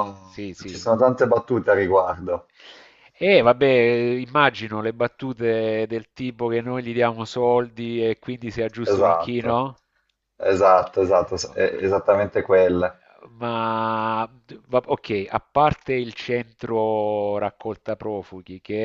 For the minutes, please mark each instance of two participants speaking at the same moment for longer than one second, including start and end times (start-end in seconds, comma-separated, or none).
none